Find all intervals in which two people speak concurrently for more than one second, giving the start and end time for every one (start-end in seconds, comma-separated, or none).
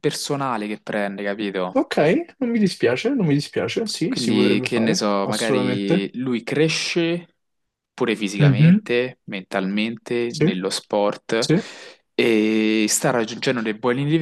4.1-6.1